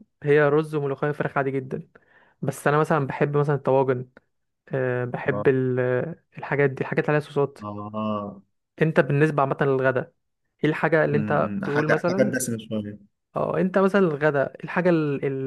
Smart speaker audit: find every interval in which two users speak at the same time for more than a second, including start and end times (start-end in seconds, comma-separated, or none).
11.1-12.4